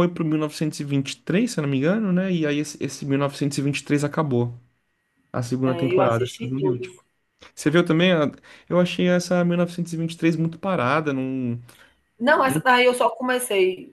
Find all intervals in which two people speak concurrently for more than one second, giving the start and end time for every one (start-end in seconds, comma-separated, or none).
5.6-6.8